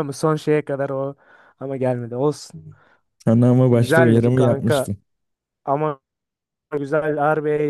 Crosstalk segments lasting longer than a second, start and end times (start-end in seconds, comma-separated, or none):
3.7-4.9